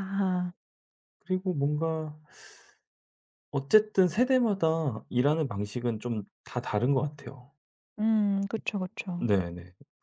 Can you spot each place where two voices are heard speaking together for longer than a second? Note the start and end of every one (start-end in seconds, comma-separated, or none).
none